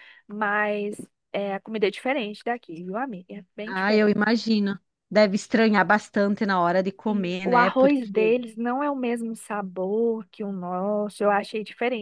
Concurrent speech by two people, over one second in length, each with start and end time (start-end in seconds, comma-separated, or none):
7.0-8.4